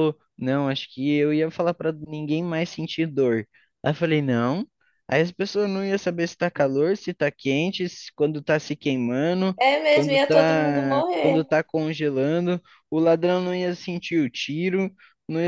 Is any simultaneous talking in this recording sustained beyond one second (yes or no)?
yes